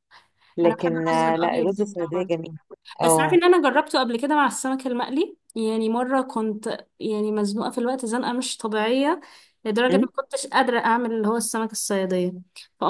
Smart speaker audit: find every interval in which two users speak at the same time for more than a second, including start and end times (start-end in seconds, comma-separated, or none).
0.6-2.4